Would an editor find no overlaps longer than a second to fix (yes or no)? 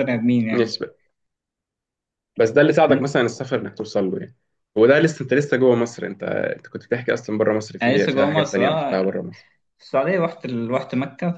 no